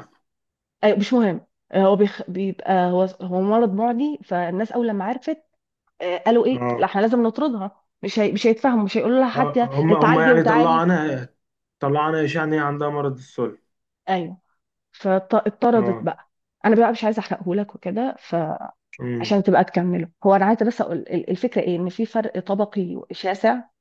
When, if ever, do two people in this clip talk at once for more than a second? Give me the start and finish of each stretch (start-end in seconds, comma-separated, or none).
9.3-10.9